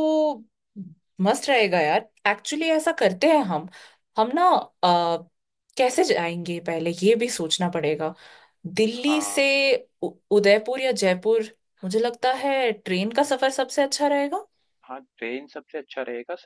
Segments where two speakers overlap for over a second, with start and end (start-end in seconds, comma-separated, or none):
none